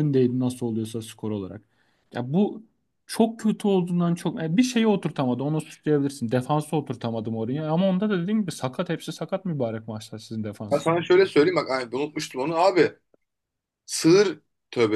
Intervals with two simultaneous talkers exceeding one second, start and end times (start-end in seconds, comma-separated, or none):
none